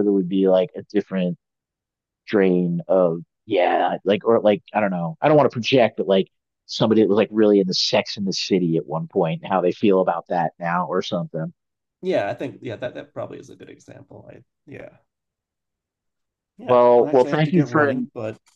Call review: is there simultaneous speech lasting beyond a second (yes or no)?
yes